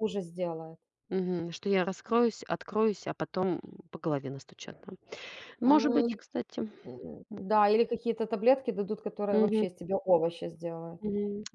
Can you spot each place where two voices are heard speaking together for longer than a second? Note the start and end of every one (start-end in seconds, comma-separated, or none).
none